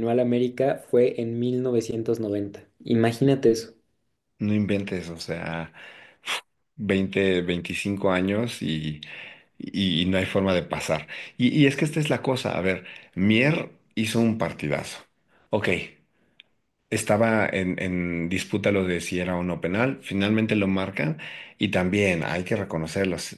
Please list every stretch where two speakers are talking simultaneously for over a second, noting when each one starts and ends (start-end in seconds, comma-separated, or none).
none